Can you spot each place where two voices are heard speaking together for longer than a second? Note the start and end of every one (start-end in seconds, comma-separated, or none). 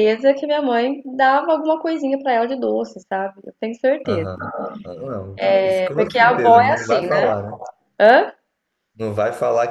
5.6-7.3